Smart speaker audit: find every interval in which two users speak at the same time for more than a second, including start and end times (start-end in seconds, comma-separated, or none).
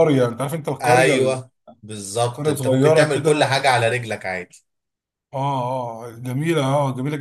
2.3-3.6